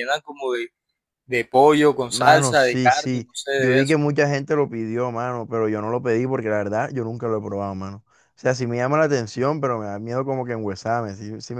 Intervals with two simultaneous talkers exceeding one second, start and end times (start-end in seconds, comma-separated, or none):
2.1-4.0